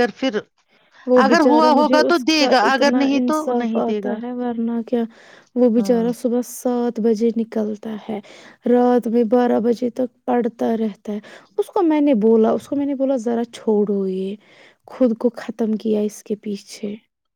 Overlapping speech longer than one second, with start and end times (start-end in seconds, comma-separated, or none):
1.2-4.2